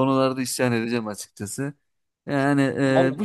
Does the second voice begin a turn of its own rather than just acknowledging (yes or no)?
no